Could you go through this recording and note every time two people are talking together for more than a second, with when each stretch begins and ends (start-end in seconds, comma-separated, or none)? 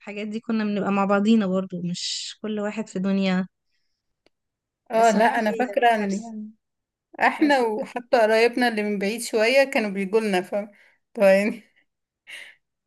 4.9-6.3